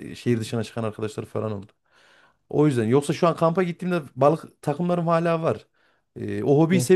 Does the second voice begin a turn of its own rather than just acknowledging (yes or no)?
no